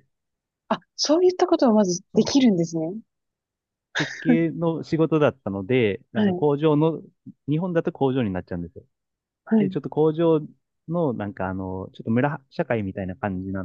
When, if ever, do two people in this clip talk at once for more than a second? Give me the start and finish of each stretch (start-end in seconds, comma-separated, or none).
none